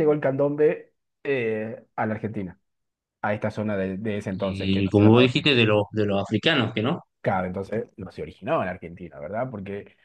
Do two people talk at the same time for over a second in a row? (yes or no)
yes